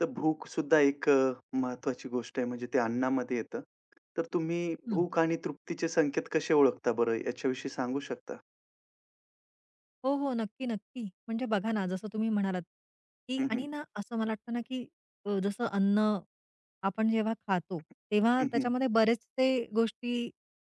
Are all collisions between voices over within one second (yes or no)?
yes